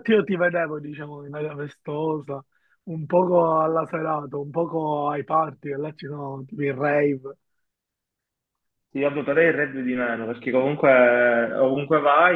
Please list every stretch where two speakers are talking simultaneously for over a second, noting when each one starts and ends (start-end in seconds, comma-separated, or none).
none